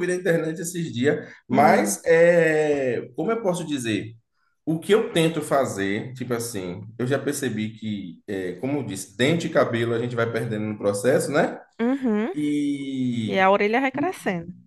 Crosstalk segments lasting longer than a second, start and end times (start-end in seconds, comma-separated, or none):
none